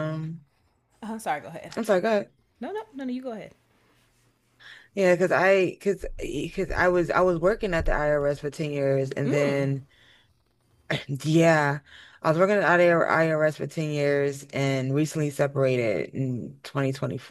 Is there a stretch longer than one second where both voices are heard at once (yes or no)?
no